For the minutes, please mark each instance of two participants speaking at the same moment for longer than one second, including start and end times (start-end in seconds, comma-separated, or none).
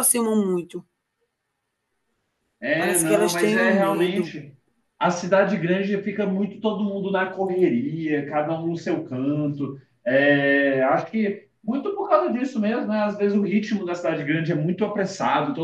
2.8-4.4